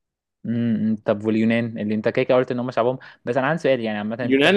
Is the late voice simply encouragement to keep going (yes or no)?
no